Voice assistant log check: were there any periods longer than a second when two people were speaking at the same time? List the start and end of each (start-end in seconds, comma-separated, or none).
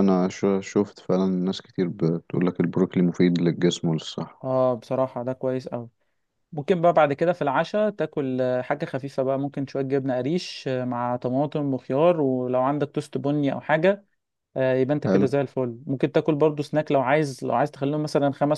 none